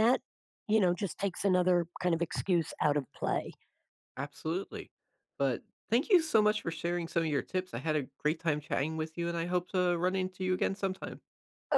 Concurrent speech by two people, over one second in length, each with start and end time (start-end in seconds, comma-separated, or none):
none